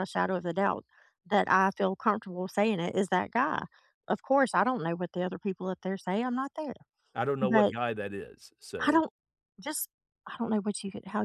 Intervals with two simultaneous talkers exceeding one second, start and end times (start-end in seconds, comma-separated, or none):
none